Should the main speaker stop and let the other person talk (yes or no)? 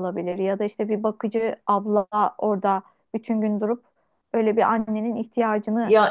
yes